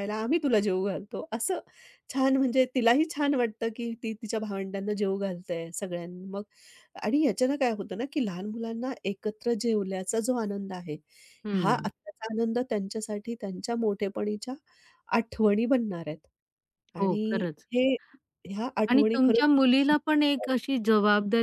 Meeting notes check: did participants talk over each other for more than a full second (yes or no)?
yes